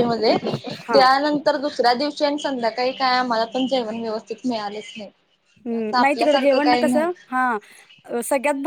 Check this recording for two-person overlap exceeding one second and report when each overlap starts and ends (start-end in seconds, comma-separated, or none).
5.8-7.3